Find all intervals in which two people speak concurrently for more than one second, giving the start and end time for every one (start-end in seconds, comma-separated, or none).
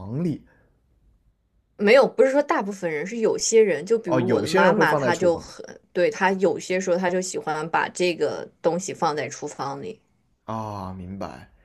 4.0-5.5